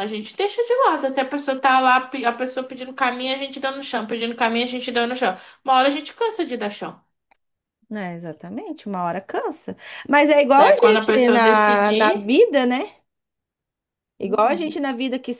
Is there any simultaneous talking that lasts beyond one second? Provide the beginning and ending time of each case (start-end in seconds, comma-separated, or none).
10.6-12.3